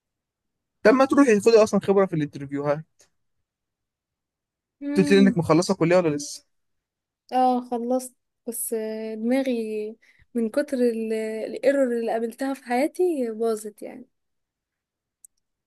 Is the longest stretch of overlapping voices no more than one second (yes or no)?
yes